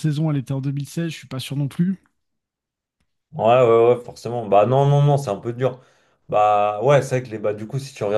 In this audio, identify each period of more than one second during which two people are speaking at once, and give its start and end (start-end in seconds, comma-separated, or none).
none